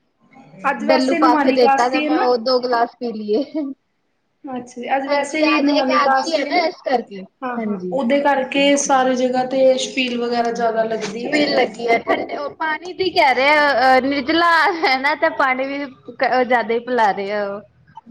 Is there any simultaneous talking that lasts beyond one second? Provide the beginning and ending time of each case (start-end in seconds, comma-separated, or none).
0.9-2.3